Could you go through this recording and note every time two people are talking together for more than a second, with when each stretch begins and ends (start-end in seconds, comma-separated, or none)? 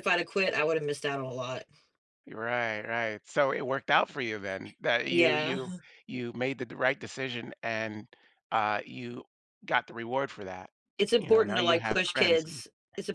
11.2-12.6